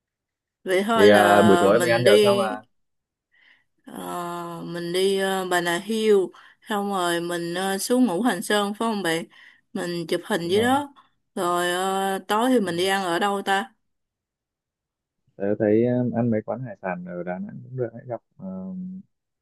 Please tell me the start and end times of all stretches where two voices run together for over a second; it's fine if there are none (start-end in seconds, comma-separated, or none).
0.9-2.5